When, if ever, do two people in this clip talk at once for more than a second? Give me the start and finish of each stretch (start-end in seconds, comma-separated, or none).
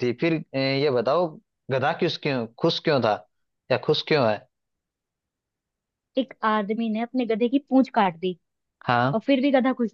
none